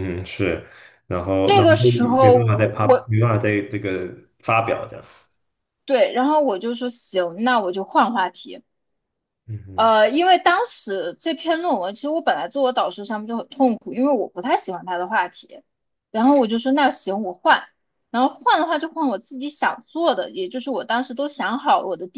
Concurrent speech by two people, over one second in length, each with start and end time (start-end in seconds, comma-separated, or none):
1.4-3.1